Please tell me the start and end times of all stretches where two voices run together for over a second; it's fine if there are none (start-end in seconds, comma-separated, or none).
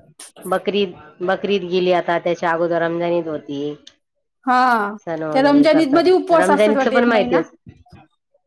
5.3-7.4